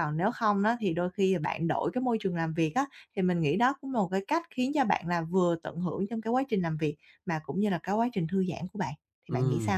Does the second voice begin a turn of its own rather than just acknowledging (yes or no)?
yes